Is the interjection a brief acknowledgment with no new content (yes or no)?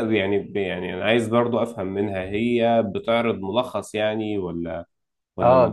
no